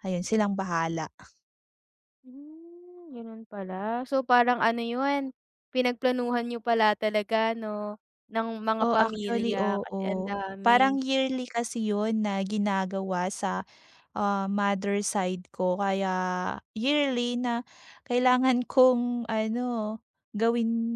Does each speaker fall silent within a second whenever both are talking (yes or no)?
no